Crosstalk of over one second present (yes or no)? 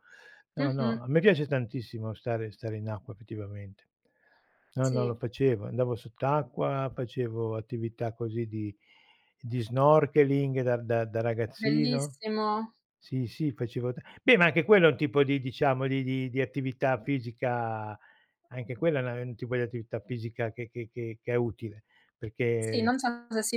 no